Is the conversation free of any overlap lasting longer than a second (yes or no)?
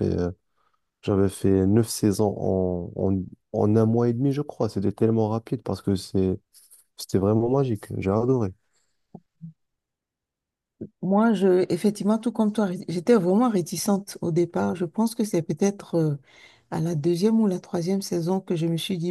yes